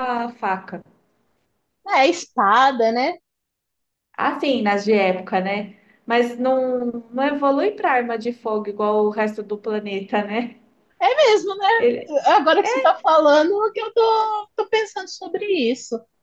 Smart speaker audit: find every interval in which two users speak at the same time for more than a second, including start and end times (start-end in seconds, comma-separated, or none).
none